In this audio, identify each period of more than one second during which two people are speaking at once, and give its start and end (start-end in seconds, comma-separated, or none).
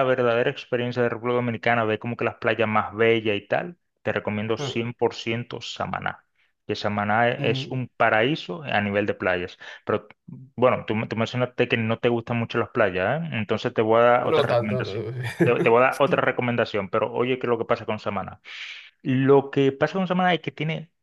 14.2-15.7